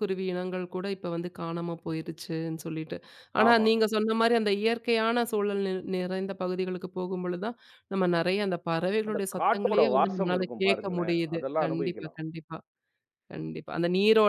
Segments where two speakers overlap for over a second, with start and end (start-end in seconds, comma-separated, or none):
9.1-12.2